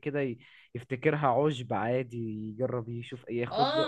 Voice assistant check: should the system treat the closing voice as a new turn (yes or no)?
yes